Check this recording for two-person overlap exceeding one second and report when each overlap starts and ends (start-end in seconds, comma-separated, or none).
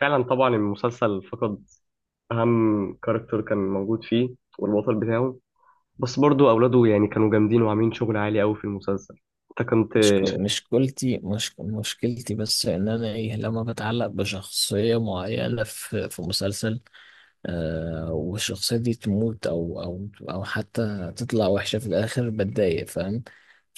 none